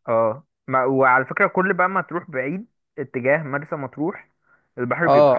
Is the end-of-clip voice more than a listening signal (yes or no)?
yes